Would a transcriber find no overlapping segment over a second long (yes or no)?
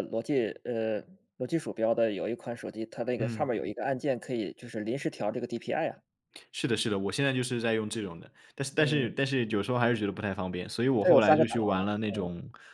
no